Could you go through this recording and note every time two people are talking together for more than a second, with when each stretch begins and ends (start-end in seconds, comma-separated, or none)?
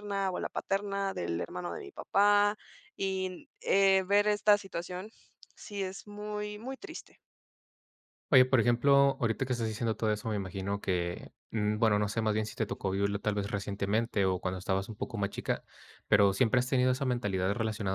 none